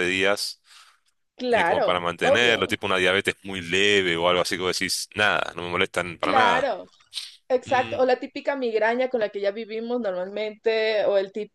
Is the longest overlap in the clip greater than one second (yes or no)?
yes